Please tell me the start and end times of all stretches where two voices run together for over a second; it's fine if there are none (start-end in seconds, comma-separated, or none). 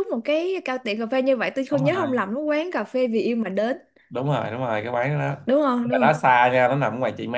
none